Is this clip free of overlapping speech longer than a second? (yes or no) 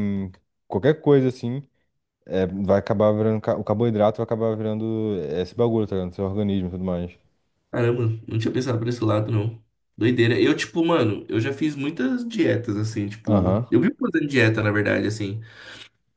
yes